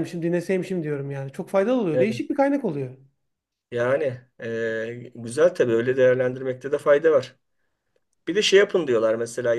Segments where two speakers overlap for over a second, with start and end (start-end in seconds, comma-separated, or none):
none